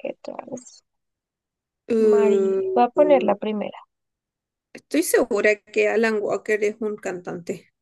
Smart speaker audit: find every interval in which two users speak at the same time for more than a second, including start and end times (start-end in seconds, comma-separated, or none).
2.0-3.4